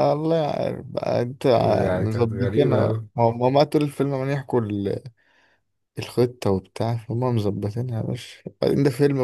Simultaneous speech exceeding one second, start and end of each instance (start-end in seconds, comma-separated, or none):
1.5-3.1